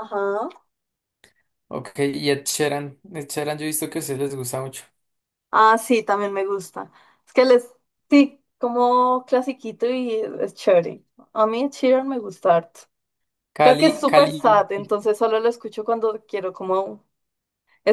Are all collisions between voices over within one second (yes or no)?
no